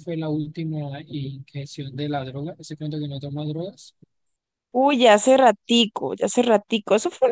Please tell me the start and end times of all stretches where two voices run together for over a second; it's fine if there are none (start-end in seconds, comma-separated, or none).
none